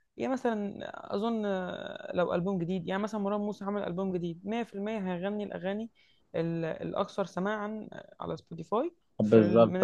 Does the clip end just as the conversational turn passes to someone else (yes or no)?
yes